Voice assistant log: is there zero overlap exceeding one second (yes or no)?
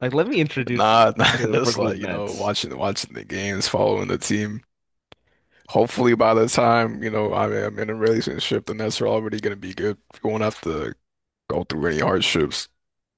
no